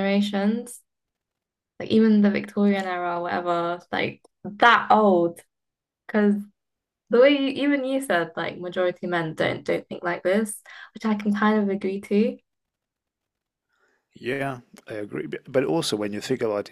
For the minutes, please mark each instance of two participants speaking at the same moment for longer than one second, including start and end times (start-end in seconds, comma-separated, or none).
none